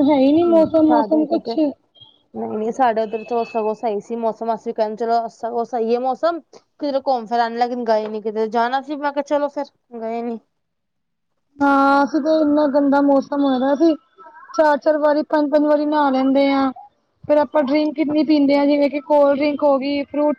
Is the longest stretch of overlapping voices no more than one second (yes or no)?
yes